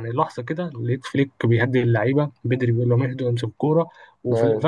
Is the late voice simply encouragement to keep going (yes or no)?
yes